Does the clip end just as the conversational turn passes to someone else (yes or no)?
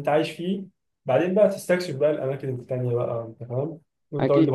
yes